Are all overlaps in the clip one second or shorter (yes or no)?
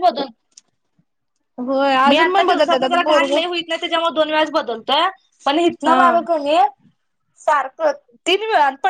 no